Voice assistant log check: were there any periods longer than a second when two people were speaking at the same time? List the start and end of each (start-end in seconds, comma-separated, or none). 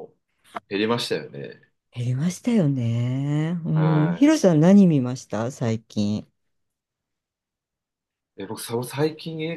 none